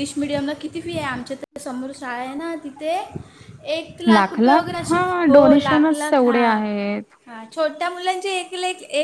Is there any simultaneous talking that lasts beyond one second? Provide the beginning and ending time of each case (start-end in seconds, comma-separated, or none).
4.9-6.4